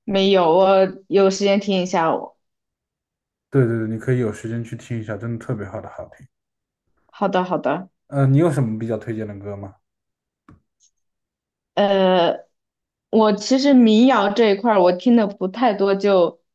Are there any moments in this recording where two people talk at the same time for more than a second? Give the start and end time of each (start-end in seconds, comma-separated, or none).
none